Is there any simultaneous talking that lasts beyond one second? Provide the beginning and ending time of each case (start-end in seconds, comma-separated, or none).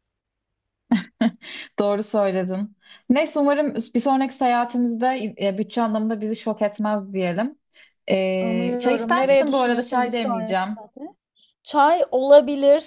8.4-10.8